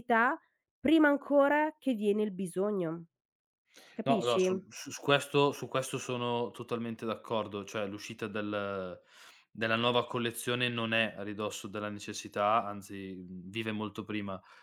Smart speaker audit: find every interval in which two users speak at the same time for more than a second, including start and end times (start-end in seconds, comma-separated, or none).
none